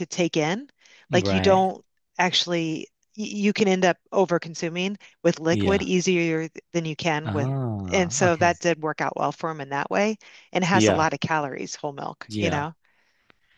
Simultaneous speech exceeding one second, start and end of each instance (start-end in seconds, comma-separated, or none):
7.2-8.6